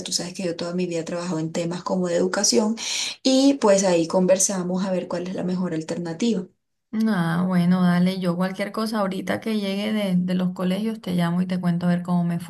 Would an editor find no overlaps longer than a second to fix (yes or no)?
yes